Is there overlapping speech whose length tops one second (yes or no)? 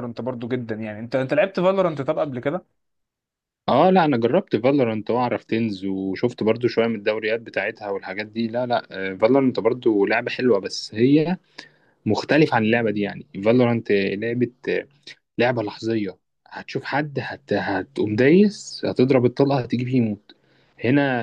no